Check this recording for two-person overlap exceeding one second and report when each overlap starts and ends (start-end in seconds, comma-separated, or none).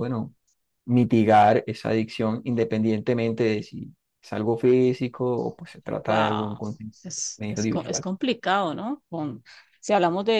none